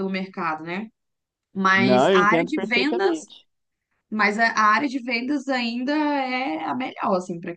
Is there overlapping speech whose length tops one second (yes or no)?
yes